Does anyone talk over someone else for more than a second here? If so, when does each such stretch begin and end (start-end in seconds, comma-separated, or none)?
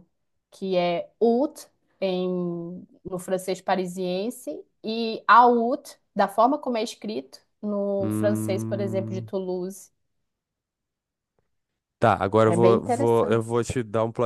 8.0-9.3, 12.5-13.7